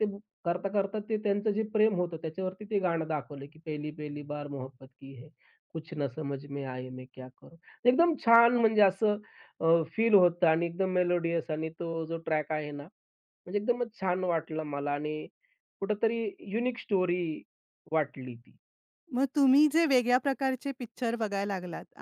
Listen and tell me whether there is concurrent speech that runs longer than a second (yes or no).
no